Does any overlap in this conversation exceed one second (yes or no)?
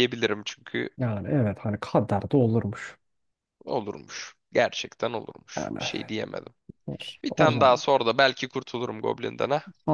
no